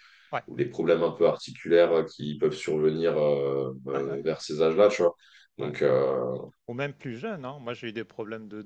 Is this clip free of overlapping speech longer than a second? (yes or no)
yes